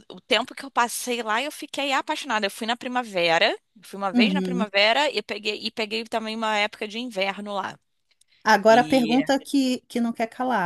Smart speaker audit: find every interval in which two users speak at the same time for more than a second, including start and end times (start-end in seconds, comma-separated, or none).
none